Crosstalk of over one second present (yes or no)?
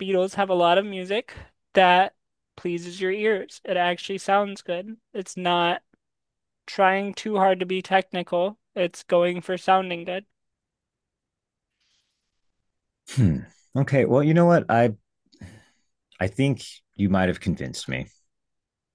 no